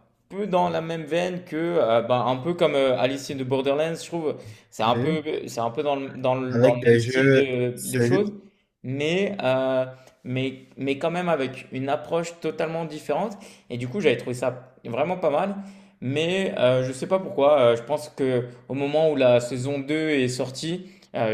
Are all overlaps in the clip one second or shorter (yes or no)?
no